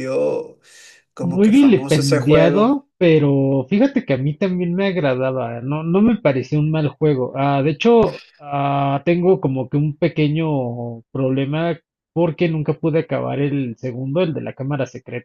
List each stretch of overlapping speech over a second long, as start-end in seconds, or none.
1.2-2.8